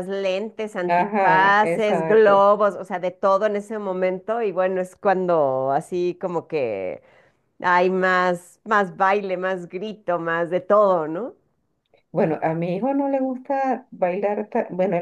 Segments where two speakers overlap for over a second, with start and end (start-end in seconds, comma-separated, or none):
0.8-2.5